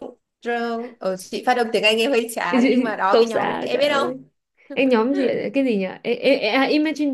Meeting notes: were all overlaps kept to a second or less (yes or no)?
no